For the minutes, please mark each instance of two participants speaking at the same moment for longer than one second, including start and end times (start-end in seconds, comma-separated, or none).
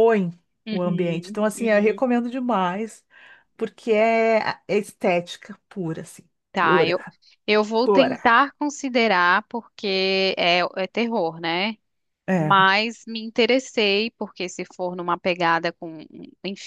0.7-2.0